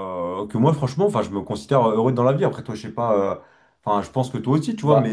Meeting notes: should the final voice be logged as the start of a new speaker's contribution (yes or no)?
no